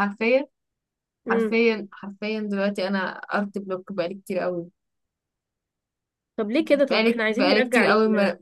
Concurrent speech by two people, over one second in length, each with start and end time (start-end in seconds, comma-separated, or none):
6.7-7.8